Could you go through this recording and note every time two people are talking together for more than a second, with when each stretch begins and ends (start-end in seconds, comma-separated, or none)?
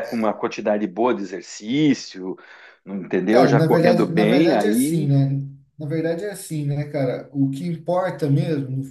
3.3-5.1